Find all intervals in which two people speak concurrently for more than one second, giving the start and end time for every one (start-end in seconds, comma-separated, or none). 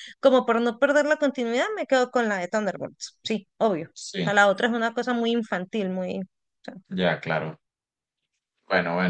none